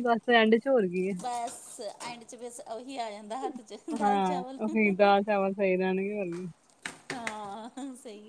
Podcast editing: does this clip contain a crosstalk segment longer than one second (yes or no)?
no